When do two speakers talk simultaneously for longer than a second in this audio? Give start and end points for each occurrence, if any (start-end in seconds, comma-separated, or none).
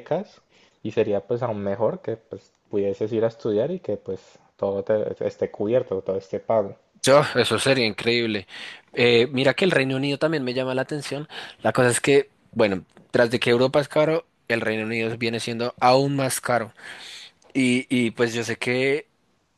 none